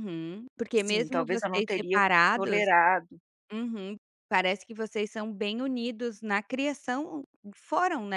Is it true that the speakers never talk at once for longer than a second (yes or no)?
no